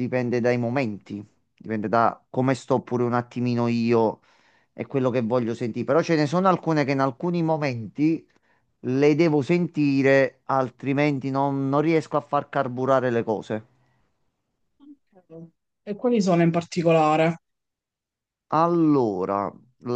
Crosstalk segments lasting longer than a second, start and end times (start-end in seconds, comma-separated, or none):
none